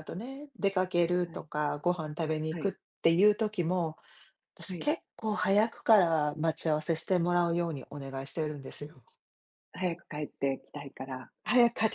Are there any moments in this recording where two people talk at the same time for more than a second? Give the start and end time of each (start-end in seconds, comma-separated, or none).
none